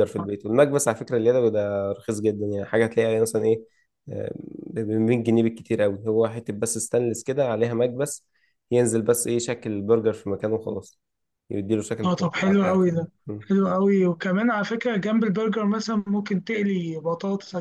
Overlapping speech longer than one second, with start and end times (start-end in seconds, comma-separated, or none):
12.0-13.5